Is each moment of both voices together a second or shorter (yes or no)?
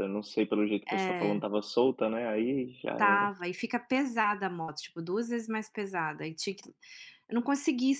yes